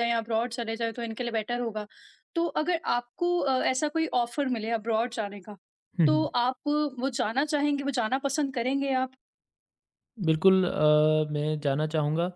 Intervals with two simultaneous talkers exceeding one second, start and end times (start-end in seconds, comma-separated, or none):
none